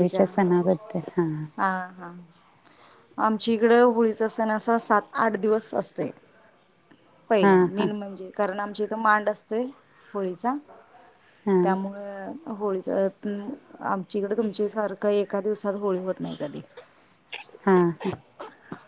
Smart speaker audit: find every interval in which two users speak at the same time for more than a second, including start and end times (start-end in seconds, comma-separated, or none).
none